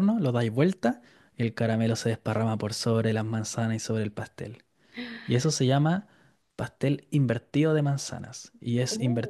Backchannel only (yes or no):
yes